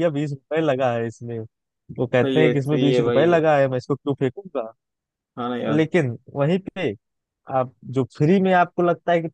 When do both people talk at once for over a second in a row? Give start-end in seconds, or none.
2.2-3.4